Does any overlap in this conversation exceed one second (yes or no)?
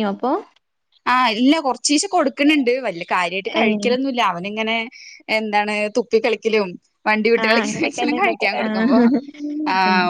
yes